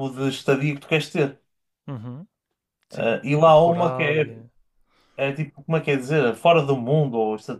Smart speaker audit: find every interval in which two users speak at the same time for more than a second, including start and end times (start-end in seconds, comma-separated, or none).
2.9-4.2